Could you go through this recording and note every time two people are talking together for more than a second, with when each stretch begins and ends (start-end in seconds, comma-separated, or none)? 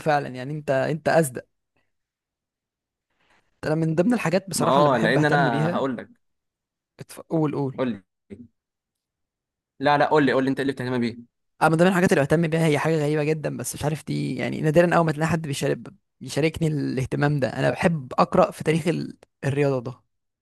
4.5-5.8